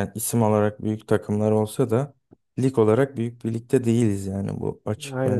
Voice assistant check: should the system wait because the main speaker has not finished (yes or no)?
no